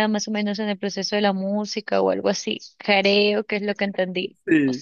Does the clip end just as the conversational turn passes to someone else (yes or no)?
yes